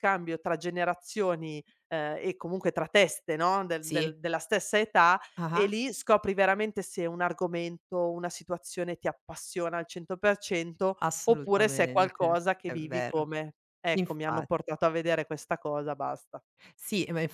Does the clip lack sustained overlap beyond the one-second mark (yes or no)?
no